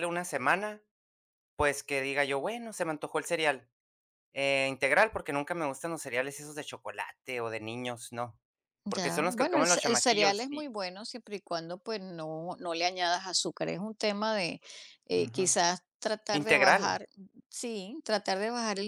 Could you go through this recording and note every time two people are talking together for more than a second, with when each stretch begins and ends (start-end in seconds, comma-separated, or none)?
8.9-10.7